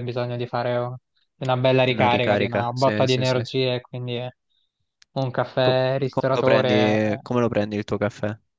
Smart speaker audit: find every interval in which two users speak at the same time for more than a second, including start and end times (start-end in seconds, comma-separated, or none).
1.9-3.5, 5.6-7.4